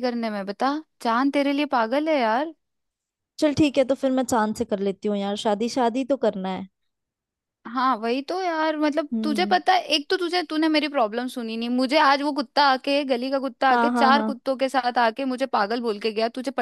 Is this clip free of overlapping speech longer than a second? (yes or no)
yes